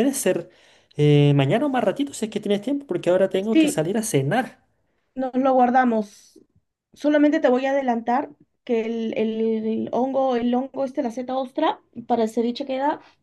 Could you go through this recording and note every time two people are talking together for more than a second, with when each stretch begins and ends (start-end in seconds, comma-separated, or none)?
none